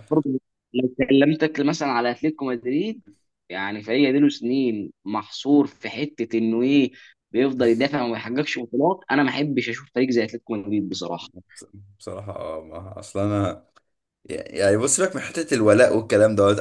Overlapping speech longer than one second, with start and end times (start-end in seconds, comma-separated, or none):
none